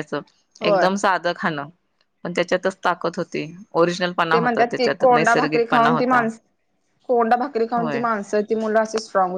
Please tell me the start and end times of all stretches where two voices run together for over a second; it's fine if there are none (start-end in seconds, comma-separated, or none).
4.3-6.2